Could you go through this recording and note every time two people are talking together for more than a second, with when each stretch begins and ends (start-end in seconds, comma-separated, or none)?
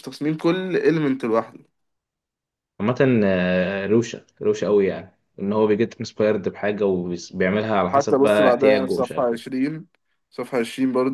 7.9-9.4